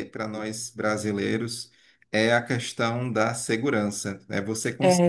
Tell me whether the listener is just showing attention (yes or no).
yes